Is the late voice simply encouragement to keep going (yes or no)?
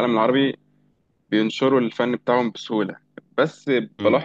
yes